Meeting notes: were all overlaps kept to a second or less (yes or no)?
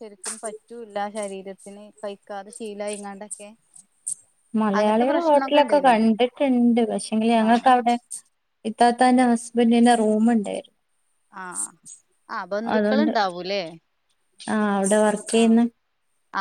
yes